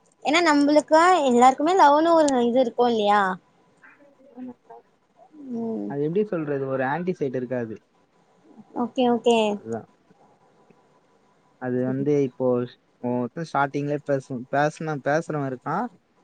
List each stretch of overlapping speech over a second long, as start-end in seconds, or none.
none